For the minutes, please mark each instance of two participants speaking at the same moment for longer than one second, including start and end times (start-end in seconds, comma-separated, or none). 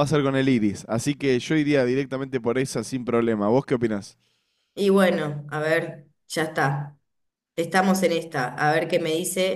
none